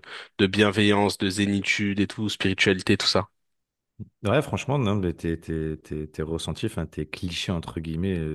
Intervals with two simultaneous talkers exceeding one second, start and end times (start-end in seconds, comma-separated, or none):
none